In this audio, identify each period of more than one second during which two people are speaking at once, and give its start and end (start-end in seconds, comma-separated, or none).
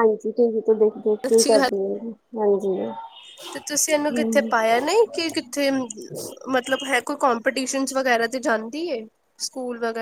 none